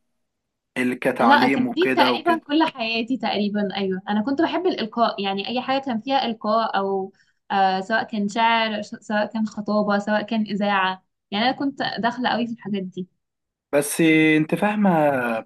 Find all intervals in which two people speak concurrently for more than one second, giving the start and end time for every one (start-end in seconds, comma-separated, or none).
1.2-2.4